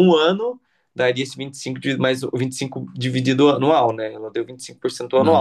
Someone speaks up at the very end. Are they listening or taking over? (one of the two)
taking over